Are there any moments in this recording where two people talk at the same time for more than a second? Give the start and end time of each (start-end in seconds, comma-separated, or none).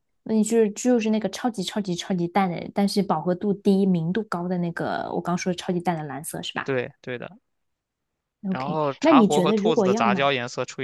8.5-10.3